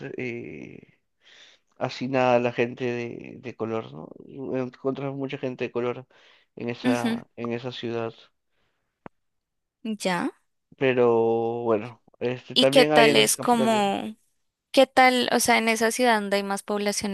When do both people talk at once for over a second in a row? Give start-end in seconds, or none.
12.5-13.9